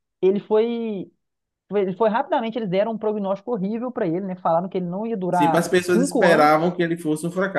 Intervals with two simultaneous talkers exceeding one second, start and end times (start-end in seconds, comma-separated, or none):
5.3-6.7